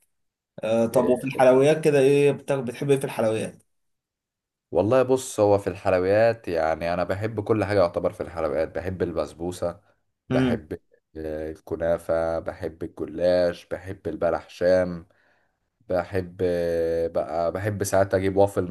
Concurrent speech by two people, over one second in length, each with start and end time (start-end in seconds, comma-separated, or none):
none